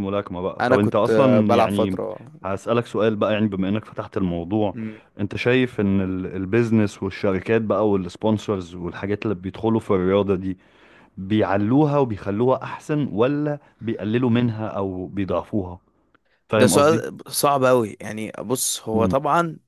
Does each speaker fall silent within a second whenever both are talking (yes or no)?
no